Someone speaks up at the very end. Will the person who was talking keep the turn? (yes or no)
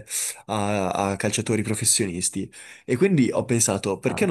yes